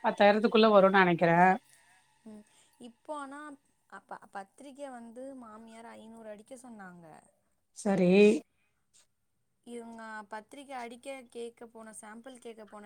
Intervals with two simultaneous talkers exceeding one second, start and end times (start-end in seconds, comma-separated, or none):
none